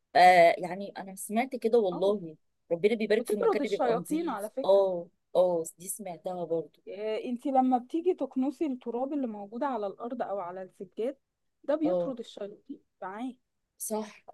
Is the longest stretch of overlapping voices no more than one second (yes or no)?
no